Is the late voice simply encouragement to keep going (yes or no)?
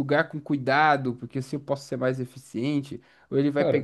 yes